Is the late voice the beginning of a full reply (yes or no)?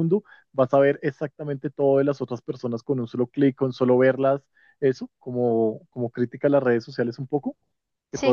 no